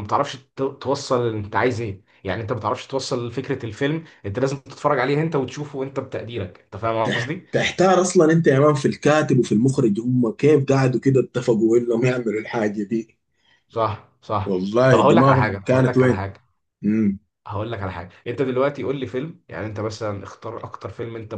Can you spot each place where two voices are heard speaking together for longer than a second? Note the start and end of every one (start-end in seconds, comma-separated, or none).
14.4-16.2